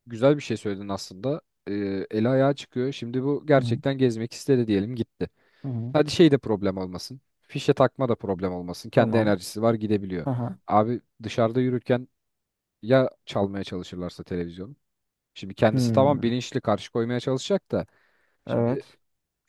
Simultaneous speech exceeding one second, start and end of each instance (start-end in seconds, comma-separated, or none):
none